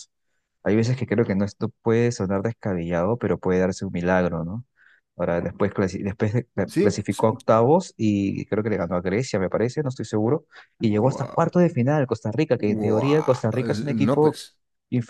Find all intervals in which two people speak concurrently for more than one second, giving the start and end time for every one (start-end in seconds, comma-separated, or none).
12.6-14.4